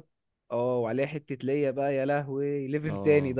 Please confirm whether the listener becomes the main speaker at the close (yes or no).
yes